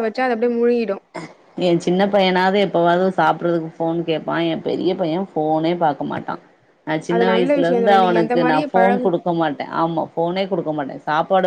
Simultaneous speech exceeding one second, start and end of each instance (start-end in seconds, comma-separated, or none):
7.1-9.1